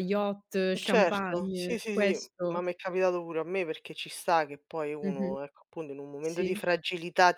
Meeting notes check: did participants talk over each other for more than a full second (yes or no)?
yes